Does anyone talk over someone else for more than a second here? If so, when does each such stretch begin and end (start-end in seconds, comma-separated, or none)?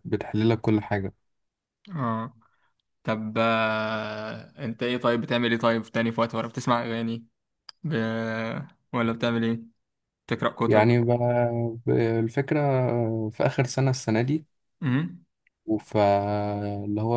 none